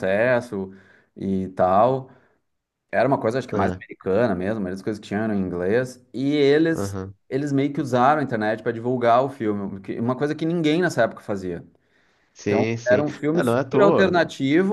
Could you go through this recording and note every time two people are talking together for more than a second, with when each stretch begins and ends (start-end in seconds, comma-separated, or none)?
12.4-14.2